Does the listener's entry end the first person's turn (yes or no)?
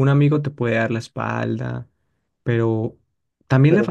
no